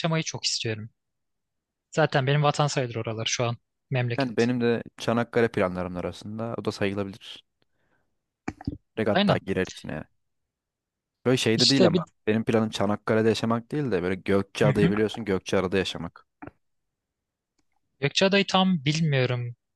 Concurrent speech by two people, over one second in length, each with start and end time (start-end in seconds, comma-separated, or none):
none